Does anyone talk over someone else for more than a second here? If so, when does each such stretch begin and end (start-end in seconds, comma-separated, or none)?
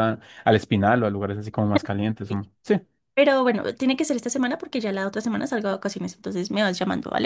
none